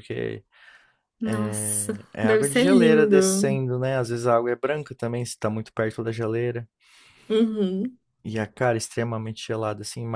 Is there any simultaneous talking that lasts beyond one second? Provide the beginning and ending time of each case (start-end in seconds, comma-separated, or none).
1.2-3.6